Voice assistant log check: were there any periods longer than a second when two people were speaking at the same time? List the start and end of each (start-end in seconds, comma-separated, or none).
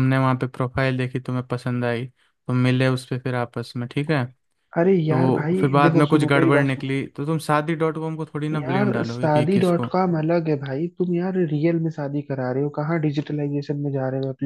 5.1-7.0, 8.5-9.9